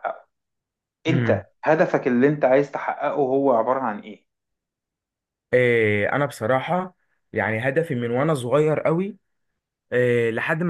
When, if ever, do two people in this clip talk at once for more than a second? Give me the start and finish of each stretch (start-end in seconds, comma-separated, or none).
none